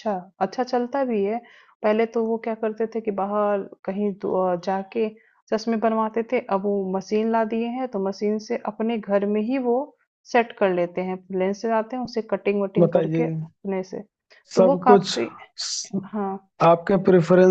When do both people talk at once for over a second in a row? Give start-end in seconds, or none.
none